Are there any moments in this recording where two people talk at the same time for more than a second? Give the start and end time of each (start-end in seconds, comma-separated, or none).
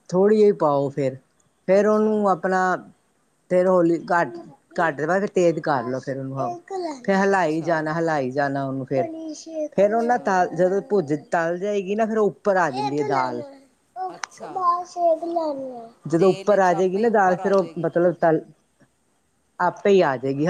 16.2-17.9